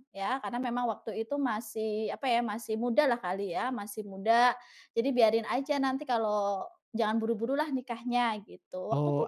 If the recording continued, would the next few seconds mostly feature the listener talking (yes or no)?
yes